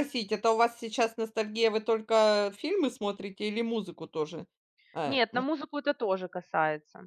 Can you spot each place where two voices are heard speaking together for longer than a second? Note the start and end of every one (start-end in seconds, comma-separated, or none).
none